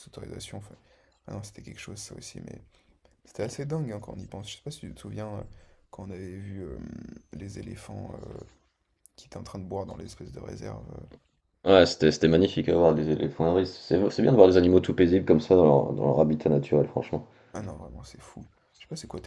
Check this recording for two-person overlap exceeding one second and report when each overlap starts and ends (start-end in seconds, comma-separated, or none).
none